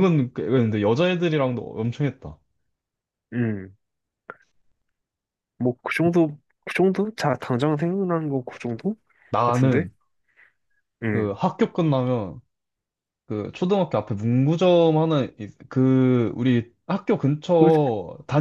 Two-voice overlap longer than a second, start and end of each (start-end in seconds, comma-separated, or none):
none